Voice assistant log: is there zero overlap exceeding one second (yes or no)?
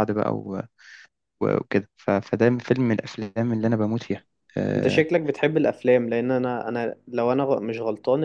yes